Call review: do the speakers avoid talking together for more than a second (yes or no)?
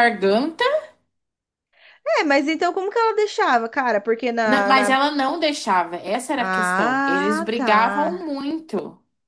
no